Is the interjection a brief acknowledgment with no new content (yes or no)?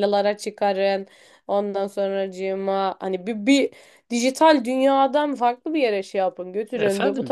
no